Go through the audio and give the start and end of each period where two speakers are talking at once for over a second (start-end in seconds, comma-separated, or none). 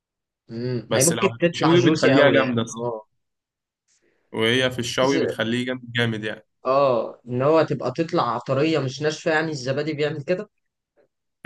0.9-2.9